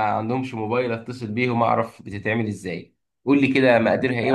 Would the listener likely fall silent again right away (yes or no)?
no